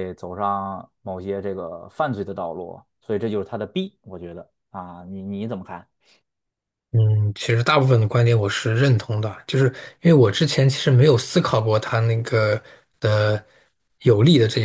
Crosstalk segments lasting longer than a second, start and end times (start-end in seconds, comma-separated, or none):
none